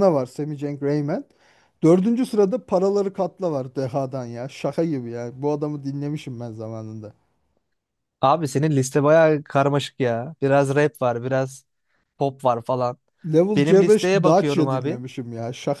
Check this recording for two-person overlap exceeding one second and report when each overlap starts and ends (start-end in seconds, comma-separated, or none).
13.6-15.0